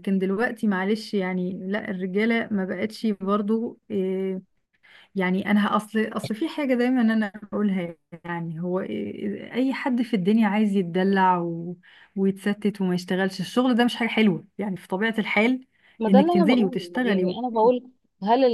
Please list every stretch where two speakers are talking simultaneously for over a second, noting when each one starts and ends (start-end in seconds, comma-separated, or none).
16.1-17.4